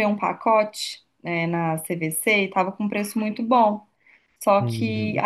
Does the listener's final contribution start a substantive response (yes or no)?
no